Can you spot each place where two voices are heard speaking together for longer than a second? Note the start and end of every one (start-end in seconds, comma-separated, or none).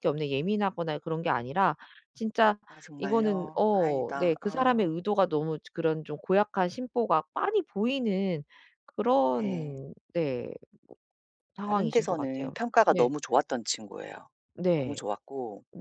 3.0-5.0, 11.6-13.1